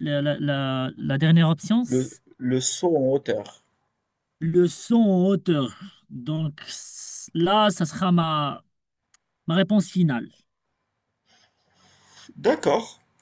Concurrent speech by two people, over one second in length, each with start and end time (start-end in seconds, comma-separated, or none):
none